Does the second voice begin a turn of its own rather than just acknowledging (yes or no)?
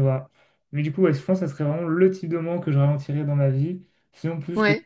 no